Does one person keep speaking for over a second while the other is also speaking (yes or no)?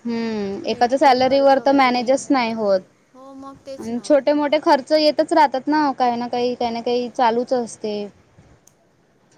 yes